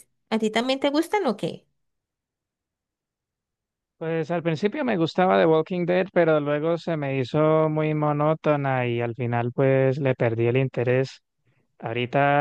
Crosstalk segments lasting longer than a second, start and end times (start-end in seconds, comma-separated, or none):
none